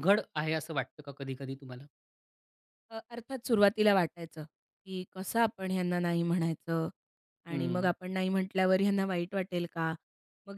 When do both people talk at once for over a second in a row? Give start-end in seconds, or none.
none